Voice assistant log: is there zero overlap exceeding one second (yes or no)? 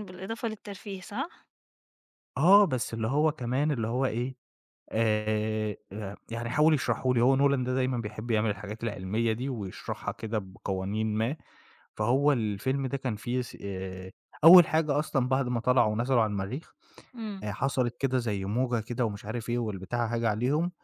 yes